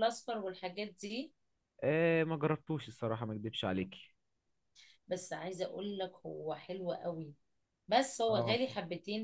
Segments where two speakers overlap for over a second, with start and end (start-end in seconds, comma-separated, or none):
none